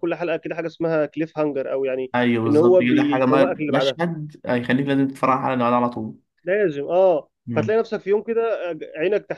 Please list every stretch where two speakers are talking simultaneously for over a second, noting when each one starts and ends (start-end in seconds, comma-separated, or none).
2.1-4.0